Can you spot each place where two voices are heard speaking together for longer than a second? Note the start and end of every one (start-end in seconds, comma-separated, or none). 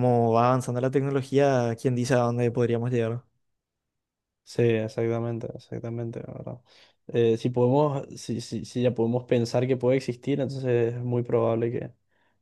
none